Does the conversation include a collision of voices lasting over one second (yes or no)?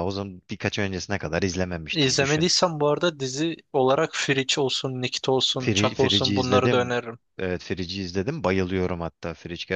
yes